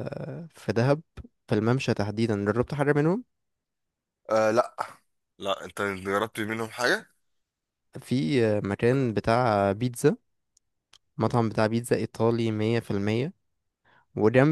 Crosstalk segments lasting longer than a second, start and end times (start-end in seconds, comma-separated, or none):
none